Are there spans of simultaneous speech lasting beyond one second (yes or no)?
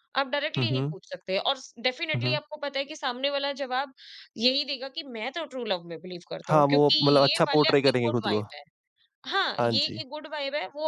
yes